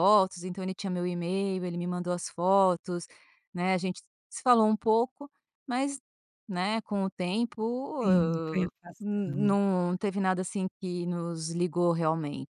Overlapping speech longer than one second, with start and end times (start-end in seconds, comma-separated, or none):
8.0-9.6